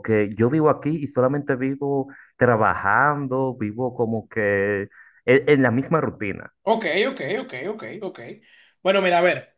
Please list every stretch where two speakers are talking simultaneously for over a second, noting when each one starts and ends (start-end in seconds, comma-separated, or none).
none